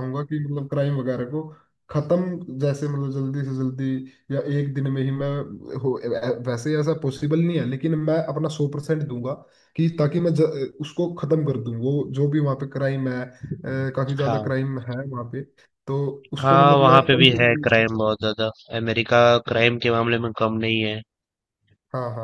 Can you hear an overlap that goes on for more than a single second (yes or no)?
yes